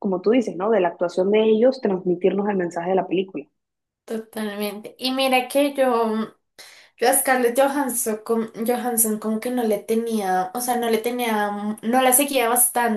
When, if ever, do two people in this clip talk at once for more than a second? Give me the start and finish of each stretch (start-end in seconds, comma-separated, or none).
none